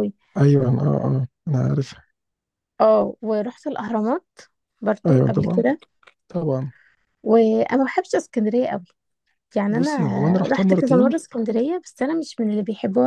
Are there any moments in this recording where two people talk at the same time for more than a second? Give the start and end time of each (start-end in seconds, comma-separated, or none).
9.7-11.2